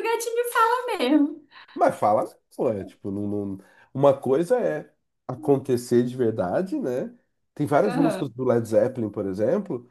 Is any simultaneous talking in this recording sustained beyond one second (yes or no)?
no